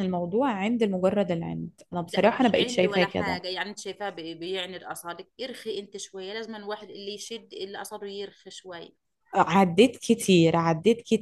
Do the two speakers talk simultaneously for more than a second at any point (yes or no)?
yes